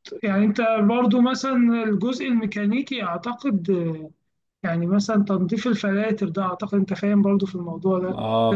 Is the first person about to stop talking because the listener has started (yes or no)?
yes